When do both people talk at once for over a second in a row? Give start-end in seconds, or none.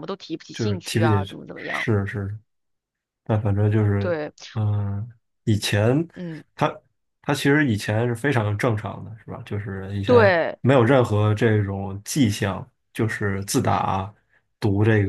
0.5-1.9